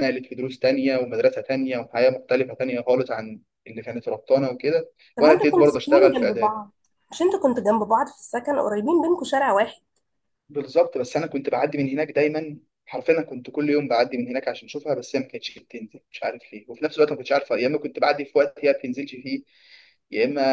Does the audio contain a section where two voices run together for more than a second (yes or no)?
yes